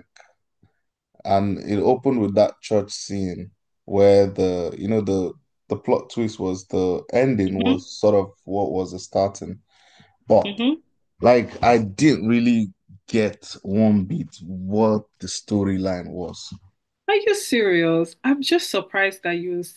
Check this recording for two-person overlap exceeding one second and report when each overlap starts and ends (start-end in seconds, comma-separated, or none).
none